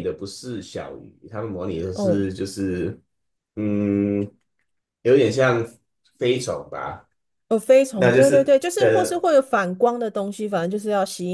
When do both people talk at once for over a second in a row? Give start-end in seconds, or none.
8.0-9.3